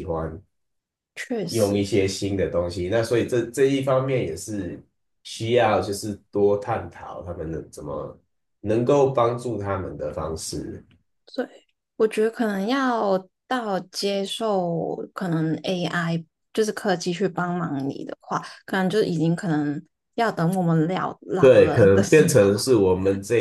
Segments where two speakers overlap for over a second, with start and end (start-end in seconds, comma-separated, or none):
21.4-22.6